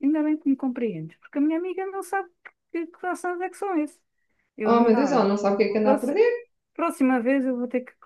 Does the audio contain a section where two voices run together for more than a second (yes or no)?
yes